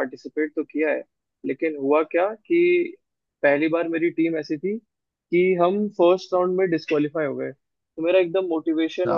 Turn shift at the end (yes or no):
no